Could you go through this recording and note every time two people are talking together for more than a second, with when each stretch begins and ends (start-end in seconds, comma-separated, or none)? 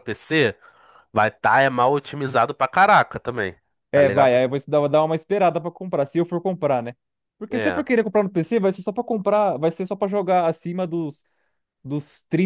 none